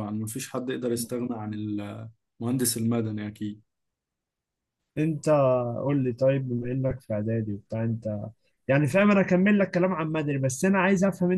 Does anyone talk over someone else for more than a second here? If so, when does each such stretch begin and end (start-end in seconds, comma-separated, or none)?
none